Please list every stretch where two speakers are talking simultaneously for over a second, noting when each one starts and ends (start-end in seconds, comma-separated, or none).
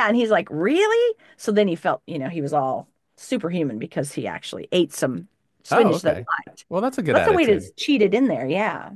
none